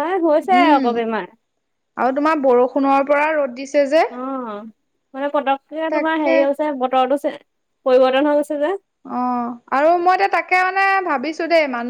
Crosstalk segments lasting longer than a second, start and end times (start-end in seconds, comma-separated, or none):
none